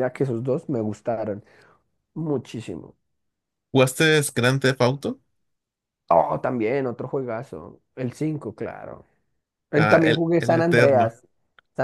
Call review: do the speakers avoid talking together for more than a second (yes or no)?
no